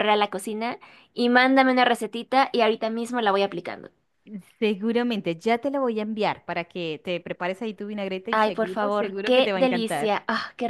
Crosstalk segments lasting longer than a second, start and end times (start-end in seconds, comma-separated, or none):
8.3-10.1